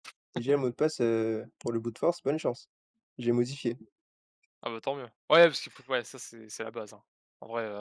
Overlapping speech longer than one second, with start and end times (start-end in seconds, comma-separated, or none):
none